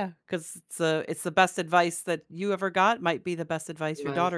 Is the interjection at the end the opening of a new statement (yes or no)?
no